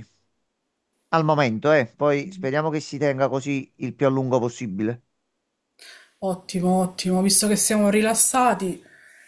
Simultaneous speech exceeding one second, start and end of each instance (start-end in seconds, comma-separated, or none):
none